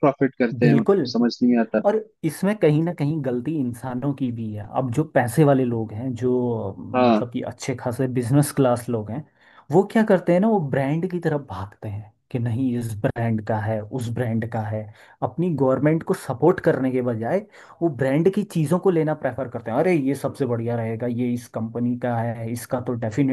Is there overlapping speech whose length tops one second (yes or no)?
no